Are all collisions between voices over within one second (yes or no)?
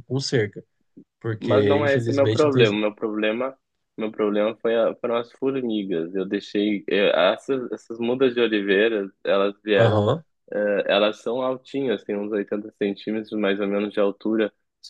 no